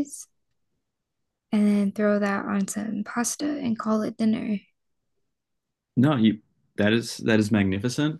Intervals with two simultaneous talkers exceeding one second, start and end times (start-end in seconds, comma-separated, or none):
none